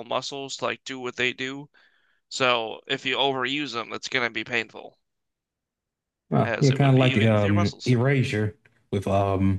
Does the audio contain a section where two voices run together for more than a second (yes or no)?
yes